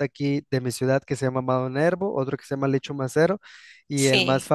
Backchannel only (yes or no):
yes